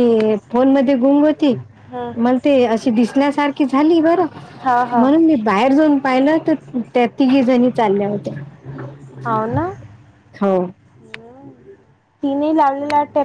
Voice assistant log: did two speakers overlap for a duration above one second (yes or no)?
no